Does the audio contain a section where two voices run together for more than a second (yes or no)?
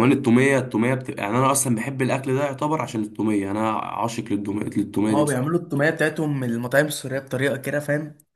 no